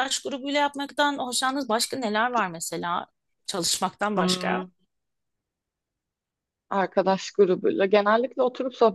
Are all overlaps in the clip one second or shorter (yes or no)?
yes